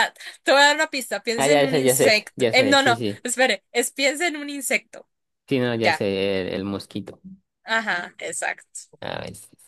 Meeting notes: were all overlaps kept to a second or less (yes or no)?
no